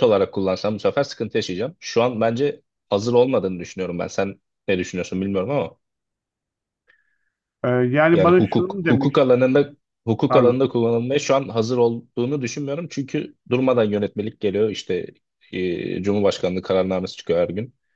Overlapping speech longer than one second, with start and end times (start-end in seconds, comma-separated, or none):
8.1-9.4